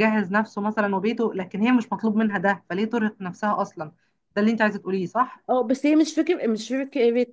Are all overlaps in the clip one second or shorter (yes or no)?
yes